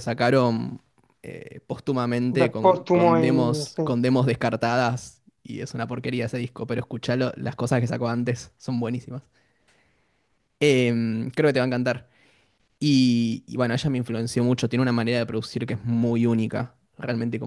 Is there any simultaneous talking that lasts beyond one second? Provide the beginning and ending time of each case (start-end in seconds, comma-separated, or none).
2.4-4.0